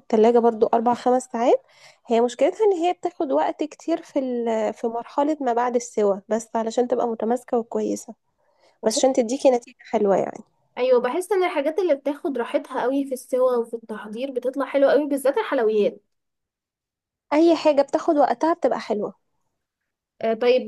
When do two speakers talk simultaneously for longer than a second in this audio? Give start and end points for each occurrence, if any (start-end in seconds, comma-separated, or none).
none